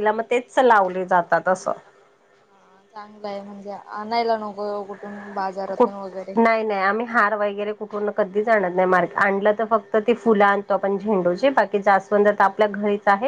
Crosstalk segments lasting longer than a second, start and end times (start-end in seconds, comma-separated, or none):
none